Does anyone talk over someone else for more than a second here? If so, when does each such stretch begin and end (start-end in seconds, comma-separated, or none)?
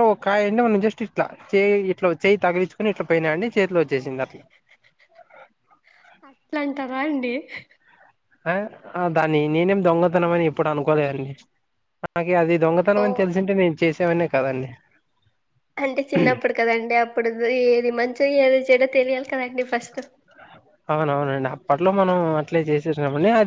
none